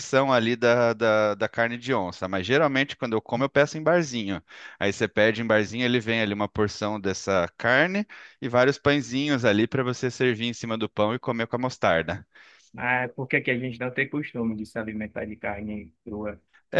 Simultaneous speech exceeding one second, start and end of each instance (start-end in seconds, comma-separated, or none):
none